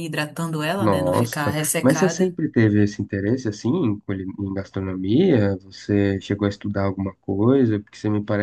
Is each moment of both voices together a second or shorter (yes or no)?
no